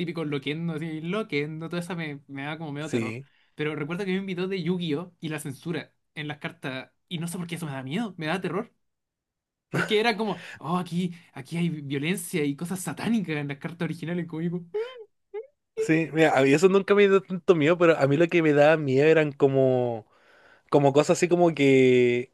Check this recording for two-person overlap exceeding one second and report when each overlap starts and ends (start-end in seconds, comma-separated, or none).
none